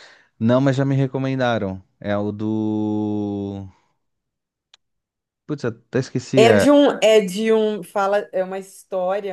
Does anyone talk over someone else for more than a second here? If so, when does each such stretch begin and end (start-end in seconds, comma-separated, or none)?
none